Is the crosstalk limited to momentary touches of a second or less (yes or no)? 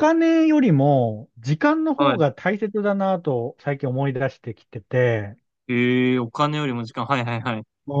yes